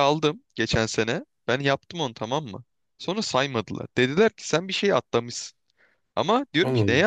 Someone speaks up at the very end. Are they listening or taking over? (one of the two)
listening